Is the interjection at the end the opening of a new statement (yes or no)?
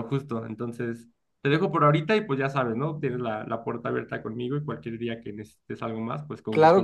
yes